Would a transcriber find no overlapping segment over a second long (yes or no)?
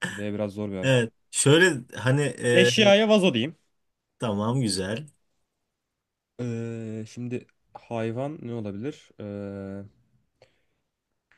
yes